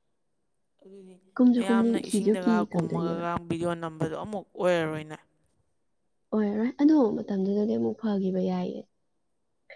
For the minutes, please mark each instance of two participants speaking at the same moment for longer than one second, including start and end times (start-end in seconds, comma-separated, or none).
1.5-3.2